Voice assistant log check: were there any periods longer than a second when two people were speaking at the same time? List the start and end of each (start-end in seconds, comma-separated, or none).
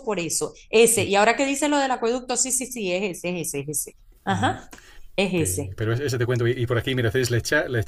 none